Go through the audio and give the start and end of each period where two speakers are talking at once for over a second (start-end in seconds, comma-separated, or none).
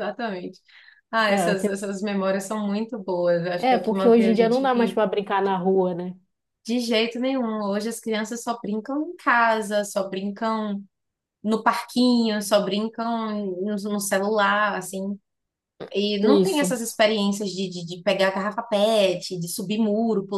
3.6-5.0